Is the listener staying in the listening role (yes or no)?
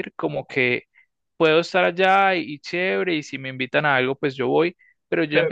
yes